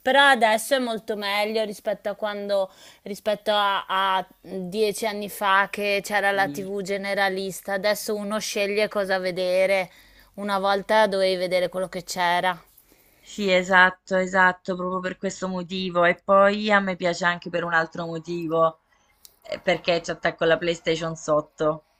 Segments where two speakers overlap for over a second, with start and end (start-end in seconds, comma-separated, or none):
none